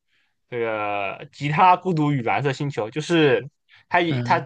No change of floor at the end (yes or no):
yes